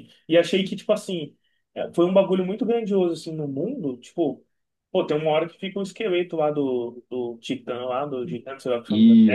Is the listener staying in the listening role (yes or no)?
yes